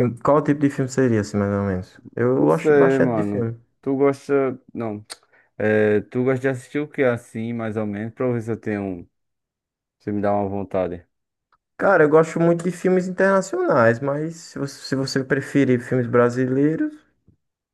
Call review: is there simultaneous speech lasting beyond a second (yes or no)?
yes